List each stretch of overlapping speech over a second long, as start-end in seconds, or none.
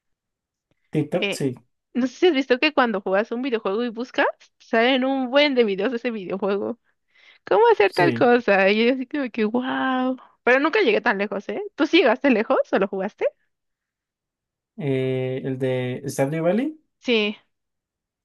none